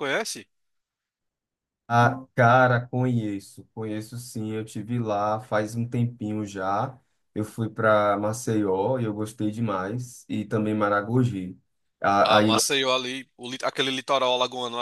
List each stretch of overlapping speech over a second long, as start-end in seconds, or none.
none